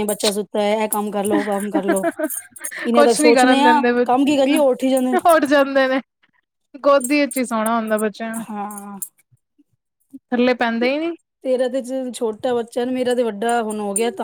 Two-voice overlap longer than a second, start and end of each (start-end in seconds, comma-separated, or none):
2.9-4.3